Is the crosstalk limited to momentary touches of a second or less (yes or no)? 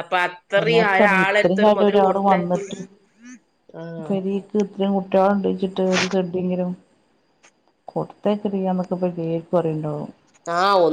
no